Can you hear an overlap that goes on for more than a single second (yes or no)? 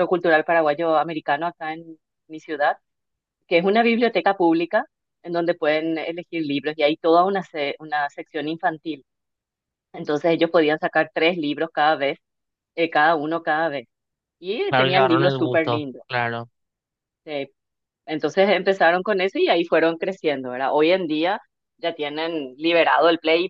yes